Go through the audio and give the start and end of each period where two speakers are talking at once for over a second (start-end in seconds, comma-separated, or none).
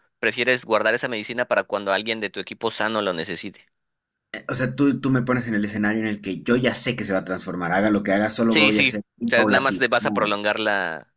8.5-10.3